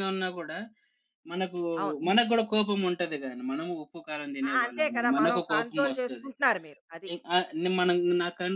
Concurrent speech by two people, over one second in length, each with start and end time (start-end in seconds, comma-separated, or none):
4.5-6.3